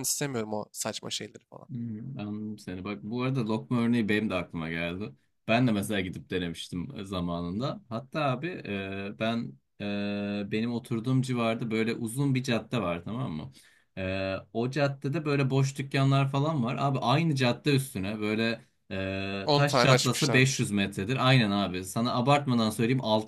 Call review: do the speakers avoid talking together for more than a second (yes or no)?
no